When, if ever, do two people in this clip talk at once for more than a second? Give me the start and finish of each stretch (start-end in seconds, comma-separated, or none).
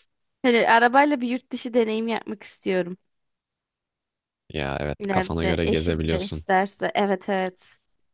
5.0-6.4